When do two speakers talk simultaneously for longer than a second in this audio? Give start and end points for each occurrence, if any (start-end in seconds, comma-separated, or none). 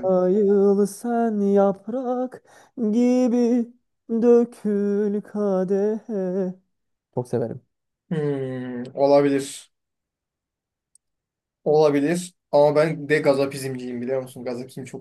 none